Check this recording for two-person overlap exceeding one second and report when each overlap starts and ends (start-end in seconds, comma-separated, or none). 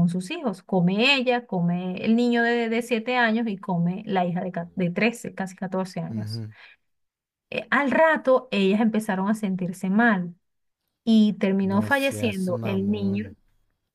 11.6-13.3